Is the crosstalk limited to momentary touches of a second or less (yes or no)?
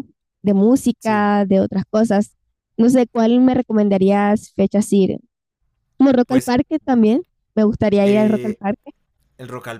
yes